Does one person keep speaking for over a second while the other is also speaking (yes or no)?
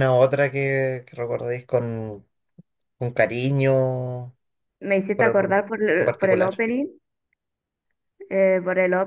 yes